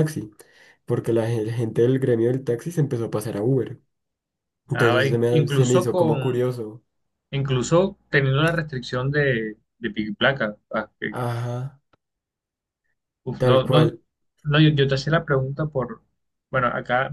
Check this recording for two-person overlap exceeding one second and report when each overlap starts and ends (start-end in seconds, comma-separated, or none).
4.7-6.2